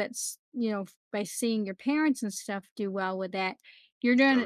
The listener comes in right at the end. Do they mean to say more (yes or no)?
no